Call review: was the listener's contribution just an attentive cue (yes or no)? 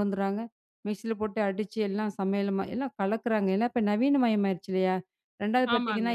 yes